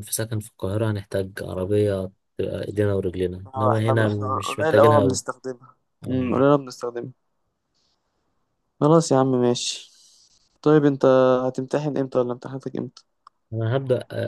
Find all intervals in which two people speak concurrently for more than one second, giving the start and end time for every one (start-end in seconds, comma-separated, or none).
3.5-5.2